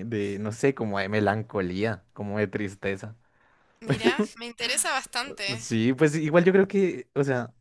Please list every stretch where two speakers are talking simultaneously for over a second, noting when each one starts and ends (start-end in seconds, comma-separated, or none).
none